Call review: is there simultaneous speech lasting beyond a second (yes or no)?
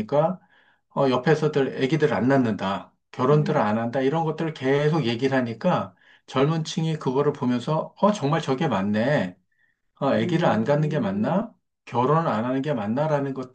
yes